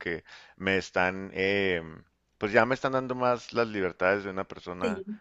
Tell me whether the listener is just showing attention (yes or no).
yes